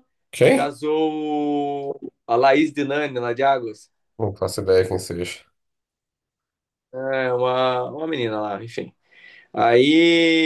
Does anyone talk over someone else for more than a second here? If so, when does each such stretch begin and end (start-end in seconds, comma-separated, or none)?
none